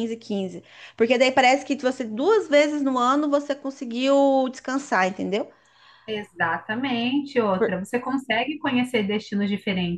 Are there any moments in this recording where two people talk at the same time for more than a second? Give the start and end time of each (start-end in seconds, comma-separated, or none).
none